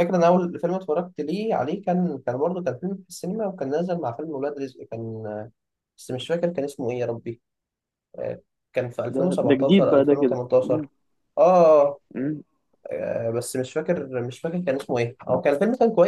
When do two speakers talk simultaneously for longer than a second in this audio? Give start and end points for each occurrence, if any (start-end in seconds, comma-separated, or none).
9.1-10.9